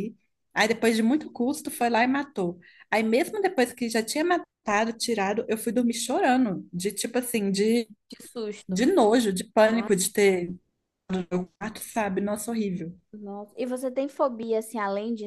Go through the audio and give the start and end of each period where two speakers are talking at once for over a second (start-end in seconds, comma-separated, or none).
none